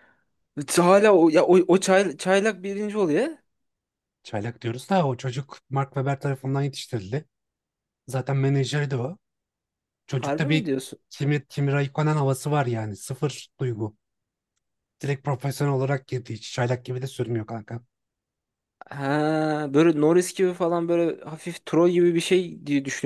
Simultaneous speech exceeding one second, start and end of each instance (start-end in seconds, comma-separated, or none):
none